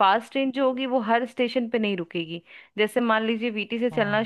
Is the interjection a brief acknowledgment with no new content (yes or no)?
yes